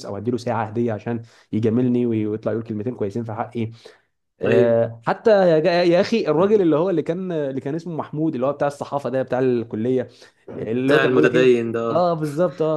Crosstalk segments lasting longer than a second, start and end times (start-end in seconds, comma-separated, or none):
10.6-12.1